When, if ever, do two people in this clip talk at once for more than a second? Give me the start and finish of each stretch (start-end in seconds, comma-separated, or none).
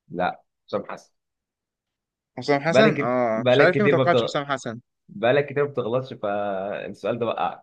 2.7-4.3